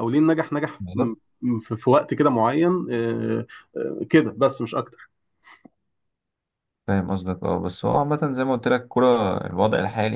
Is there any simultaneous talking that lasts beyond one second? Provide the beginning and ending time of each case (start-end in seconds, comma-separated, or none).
none